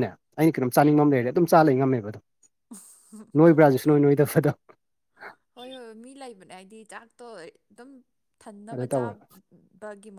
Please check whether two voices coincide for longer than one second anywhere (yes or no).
no